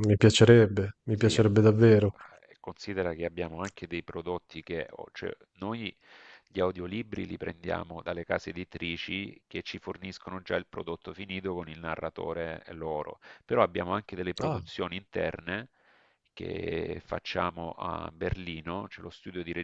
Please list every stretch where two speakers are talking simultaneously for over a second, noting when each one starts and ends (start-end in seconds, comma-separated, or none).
none